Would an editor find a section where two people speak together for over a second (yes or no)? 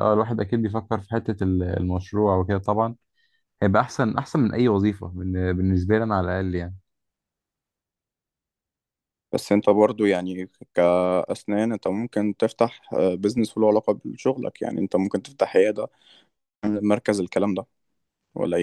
no